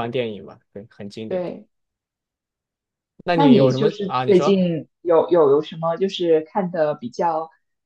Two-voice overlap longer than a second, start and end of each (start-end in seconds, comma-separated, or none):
3.3-4.6